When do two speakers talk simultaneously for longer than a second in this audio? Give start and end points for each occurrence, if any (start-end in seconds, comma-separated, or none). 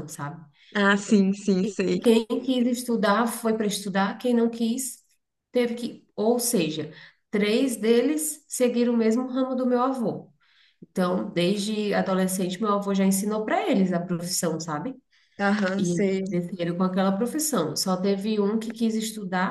none